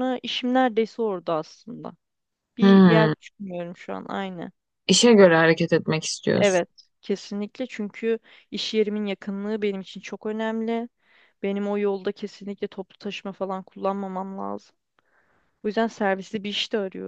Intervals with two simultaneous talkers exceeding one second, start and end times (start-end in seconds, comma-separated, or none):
none